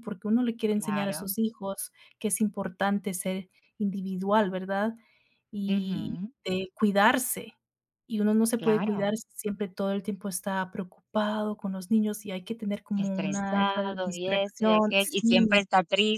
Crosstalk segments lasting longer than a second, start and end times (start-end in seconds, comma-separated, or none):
13.0-15.6